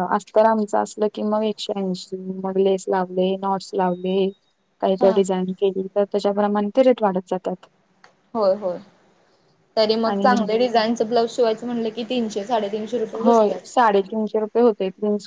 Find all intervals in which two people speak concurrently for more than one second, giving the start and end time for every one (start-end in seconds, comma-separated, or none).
none